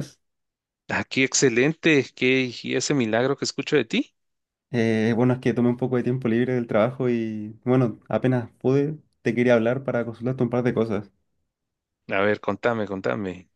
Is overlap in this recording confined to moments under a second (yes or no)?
yes